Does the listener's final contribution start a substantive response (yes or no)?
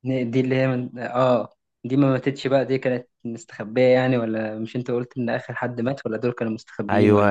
yes